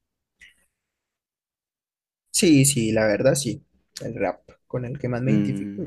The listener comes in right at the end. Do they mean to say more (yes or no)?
yes